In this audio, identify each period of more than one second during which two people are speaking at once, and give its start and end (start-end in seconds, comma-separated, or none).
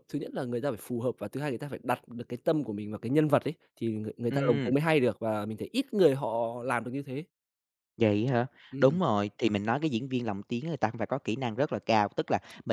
none